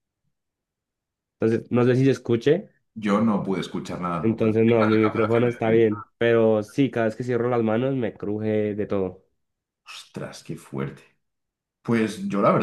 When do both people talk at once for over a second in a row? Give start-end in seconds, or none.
4.2-5.8